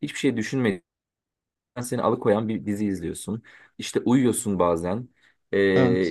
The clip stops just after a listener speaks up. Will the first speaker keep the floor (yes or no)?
yes